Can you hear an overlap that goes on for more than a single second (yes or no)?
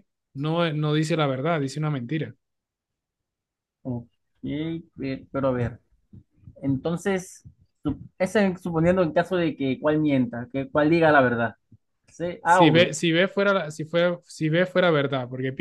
no